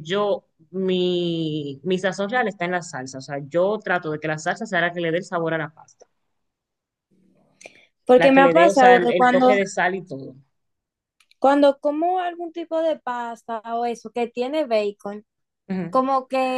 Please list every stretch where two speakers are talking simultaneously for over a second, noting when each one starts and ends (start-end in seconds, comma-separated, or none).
8.2-9.6